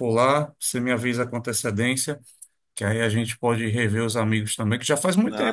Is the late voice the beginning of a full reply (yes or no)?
no